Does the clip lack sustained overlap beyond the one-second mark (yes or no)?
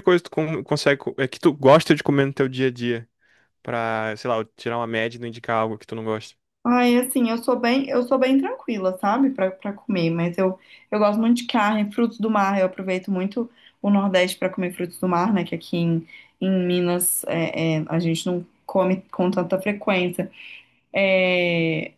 yes